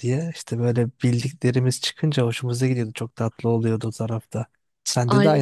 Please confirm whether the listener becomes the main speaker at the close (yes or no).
yes